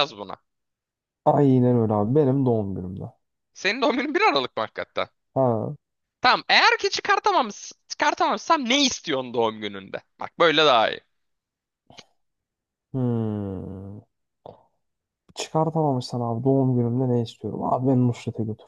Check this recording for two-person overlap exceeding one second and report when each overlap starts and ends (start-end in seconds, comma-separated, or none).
none